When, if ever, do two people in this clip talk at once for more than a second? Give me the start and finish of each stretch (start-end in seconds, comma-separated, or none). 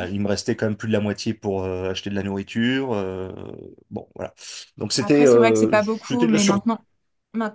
5.0-6.6